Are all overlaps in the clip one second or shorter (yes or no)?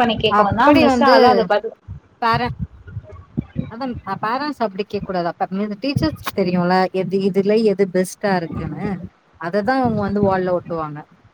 yes